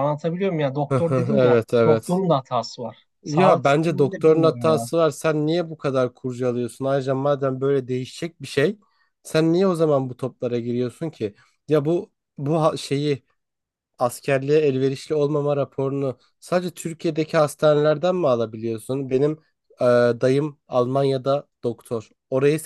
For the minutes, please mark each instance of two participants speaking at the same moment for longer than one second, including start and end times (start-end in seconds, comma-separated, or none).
0.9-2.2, 3.2-4.9